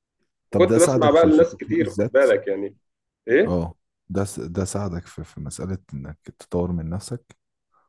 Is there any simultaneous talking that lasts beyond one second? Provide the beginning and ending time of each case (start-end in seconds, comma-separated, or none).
0.5-2.2